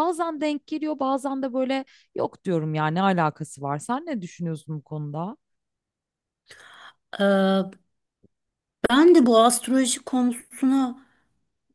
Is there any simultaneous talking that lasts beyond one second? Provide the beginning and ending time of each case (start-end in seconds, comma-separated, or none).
none